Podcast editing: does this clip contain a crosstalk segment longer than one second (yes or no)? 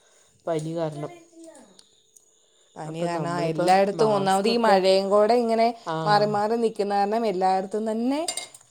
yes